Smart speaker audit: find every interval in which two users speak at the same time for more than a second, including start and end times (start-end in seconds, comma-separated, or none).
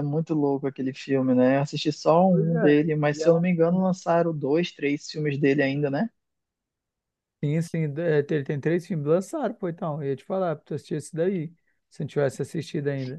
2.3-3.9